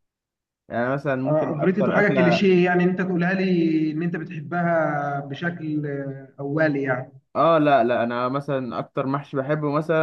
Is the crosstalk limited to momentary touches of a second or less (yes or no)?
no